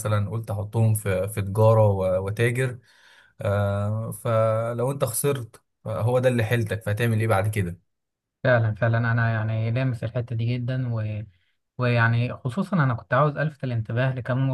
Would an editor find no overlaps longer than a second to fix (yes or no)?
yes